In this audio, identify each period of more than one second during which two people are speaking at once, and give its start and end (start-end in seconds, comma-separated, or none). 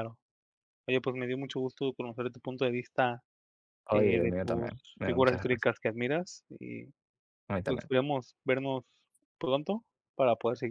3.9-5.7